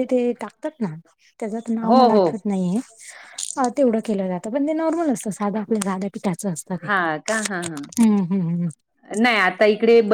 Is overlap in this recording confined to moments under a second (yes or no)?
yes